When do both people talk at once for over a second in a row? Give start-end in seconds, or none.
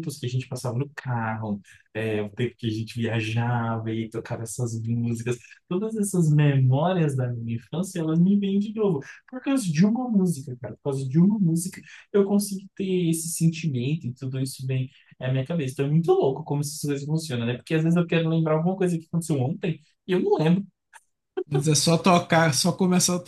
none